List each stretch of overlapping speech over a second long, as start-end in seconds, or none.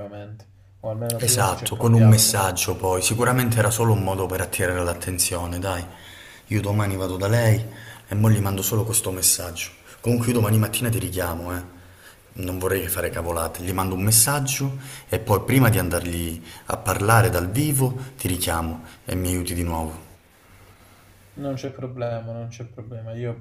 1.2-2.4